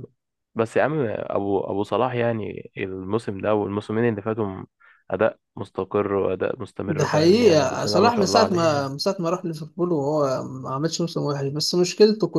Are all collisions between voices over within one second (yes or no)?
no